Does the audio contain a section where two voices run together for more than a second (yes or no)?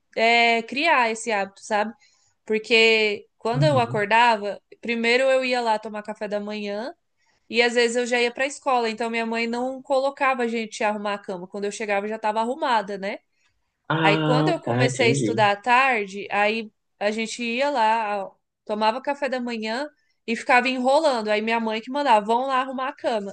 yes